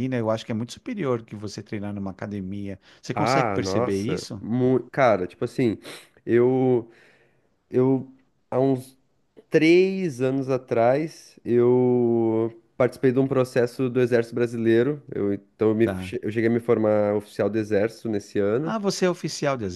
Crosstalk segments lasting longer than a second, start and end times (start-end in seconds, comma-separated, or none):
3.1-4.4